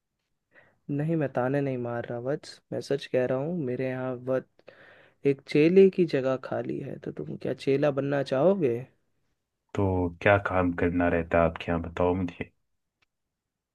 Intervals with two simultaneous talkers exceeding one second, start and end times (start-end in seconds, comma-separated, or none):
none